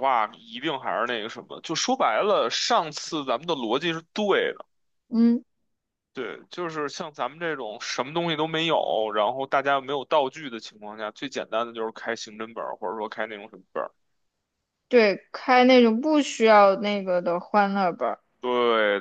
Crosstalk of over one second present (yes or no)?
no